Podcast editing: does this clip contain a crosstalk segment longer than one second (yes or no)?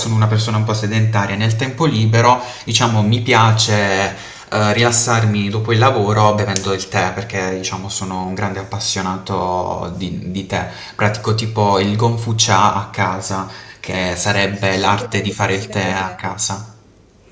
yes